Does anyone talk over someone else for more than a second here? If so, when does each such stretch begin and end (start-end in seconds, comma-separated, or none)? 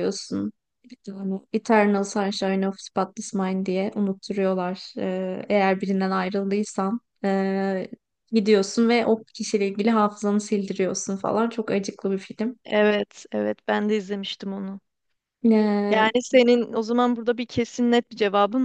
none